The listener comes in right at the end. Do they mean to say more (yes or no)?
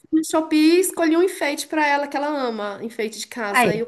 no